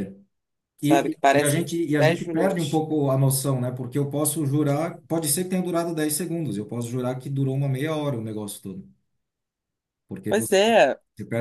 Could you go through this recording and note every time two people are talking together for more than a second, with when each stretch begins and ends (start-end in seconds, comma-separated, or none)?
0.8-2.8